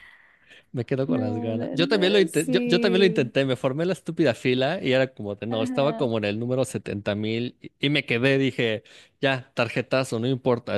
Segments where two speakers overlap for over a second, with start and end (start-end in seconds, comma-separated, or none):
1.1-3.3